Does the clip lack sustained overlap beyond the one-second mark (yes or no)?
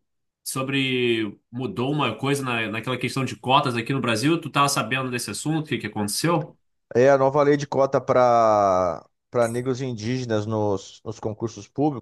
yes